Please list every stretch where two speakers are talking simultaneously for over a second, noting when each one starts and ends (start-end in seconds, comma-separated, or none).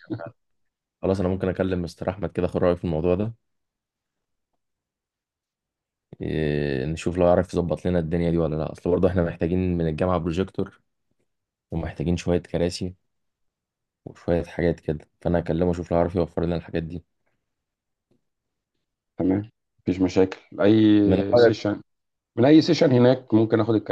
none